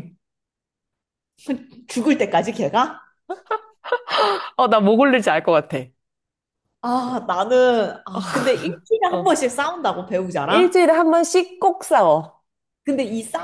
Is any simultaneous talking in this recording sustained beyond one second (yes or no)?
no